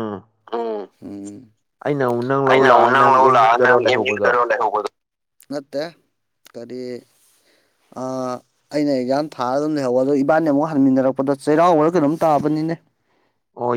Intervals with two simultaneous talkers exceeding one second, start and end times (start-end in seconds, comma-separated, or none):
2.5-4.4